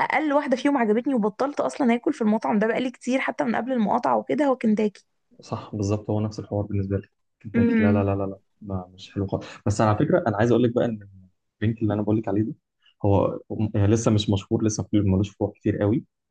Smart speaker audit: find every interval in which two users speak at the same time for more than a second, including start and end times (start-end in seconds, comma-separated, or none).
none